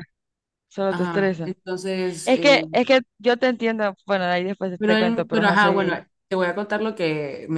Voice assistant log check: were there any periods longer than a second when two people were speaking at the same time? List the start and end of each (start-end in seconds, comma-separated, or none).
4.8-6.0